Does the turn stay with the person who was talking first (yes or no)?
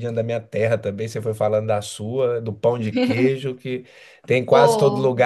yes